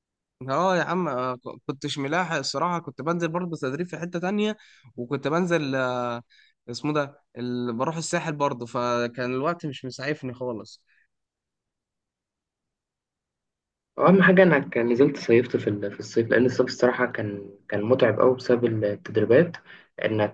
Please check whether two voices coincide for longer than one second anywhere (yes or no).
no